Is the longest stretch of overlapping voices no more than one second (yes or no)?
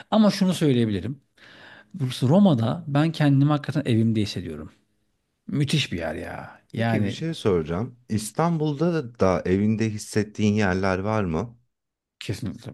yes